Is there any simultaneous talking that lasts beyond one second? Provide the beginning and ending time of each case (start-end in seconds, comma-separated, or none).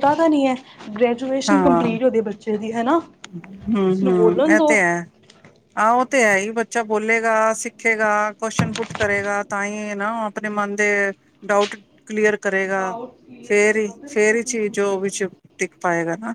13.5-15.4